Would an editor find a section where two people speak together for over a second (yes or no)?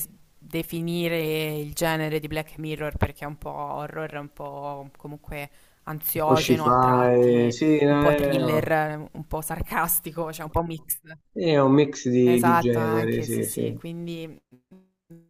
yes